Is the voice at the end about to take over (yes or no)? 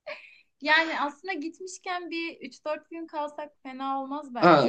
yes